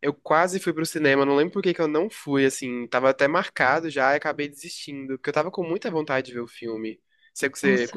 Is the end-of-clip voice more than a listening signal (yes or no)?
yes